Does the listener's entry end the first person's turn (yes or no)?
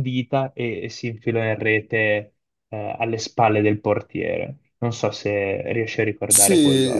yes